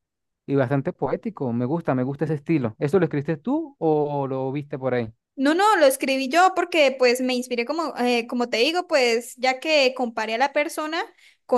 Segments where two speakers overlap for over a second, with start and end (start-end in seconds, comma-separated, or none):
none